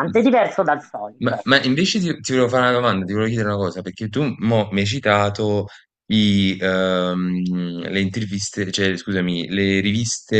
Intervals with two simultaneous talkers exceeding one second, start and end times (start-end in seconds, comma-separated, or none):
none